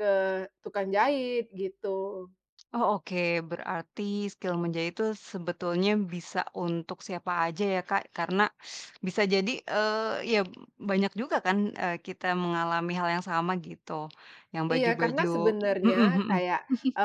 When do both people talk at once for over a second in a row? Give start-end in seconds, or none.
none